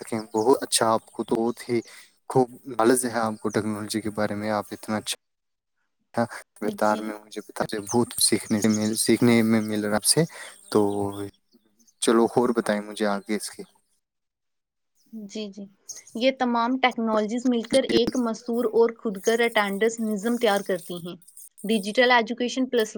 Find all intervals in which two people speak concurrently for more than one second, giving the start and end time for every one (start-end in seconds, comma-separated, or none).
none